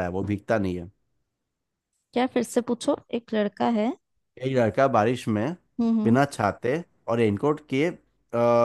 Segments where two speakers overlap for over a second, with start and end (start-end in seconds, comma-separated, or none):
none